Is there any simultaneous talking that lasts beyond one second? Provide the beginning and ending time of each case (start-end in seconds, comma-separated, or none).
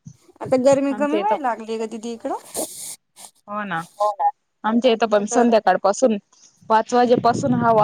none